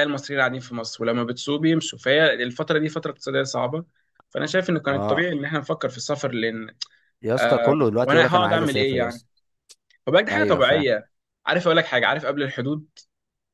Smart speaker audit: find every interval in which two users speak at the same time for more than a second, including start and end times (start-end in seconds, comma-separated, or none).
7.4-9.2